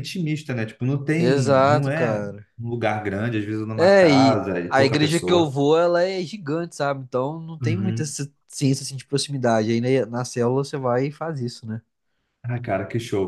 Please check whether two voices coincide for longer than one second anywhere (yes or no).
yes